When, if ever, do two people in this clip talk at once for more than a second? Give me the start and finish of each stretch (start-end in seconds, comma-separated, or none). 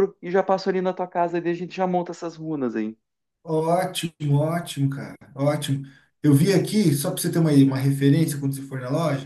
none